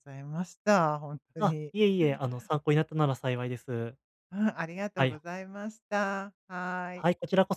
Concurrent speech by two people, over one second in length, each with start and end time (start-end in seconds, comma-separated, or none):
none